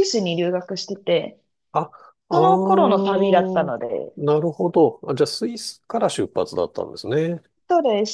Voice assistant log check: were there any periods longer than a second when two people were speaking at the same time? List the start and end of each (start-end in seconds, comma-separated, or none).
2.3-3.7